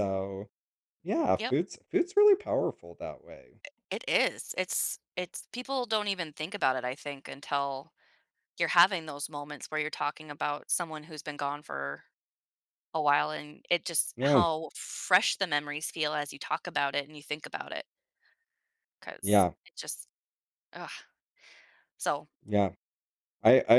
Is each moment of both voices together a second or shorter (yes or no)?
yes